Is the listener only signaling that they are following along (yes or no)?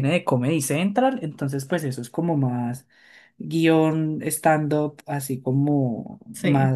yes